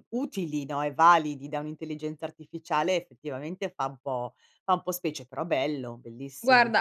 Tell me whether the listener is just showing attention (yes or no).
no